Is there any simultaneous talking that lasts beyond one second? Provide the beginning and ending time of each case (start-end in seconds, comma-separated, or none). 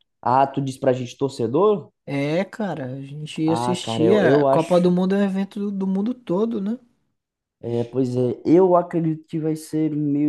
3.5-4.9